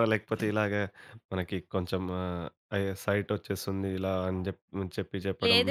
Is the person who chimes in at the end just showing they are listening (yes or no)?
no